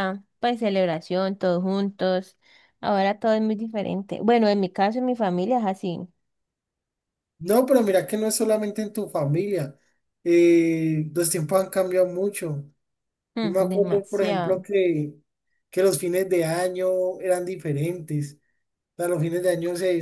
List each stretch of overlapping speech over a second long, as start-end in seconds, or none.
13.4-14.6